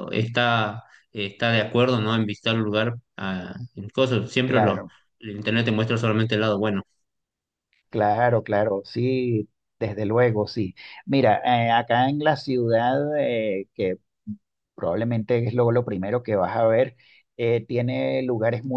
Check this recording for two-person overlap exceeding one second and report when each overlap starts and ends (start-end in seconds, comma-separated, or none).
none